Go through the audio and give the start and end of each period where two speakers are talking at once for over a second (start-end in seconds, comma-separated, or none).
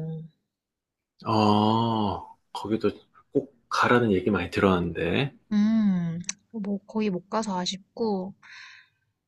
none